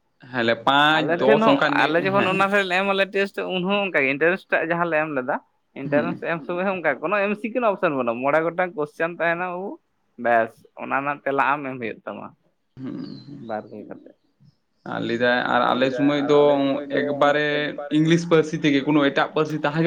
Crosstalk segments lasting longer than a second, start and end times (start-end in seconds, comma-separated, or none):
0.9-2.4